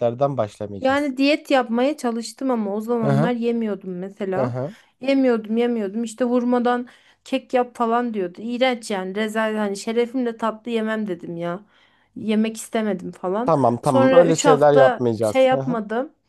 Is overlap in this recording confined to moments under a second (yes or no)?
no